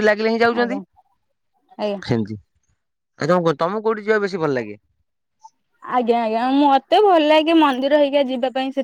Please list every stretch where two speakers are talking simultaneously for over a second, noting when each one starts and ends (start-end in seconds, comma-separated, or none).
none